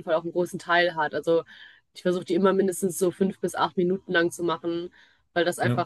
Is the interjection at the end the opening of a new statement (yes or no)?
no